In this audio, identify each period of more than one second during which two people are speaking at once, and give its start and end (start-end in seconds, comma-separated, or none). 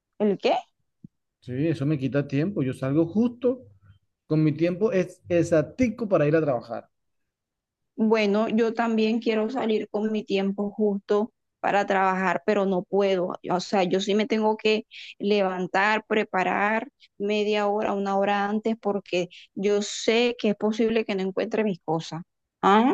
none